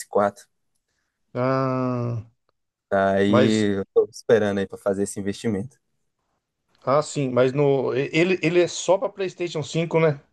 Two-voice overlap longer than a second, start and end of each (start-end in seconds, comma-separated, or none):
none